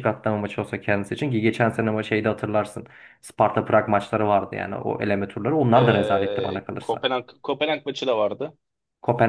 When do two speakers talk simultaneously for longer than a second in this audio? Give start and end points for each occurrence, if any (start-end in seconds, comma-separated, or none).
5.7-7.1